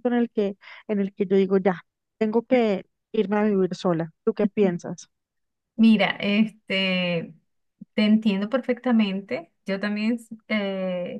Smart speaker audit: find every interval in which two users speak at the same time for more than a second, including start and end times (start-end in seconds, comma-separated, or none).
none